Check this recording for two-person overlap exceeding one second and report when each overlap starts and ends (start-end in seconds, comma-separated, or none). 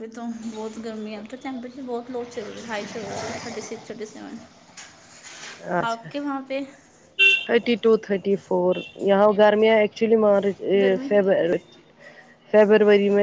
none